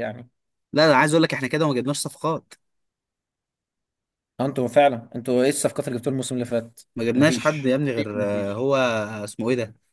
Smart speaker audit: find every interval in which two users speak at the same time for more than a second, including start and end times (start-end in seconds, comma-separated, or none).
7.2-8.6